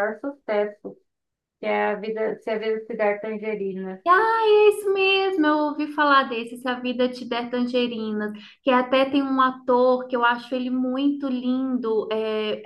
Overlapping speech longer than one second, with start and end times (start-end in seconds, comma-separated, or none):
none